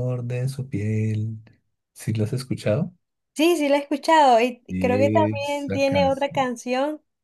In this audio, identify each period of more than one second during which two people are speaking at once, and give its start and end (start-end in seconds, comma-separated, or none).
4.7-6.5